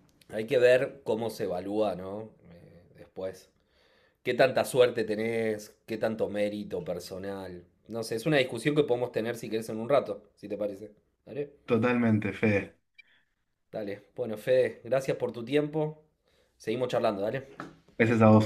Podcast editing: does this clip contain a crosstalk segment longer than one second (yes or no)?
no